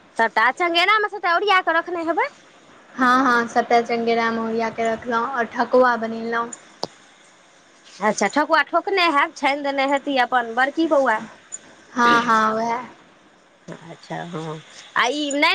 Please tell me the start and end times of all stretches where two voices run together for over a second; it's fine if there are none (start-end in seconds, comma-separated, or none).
none